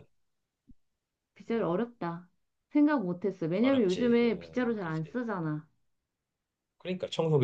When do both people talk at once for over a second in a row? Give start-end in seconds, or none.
3.6-5.2